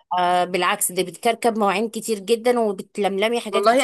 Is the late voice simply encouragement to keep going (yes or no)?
no